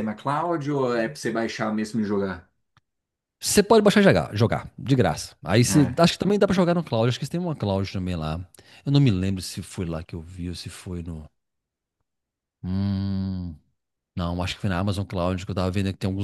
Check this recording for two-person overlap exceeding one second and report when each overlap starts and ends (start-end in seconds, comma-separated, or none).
none